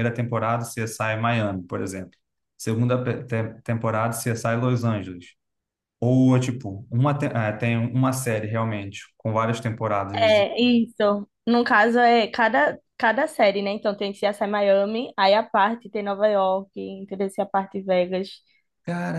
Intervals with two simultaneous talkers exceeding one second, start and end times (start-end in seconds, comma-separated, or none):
none